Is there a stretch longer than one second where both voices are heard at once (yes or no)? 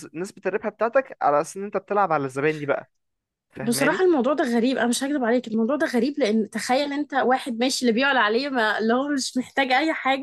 no